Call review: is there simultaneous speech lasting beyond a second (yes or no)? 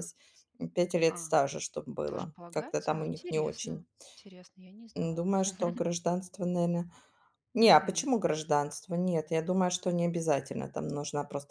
yes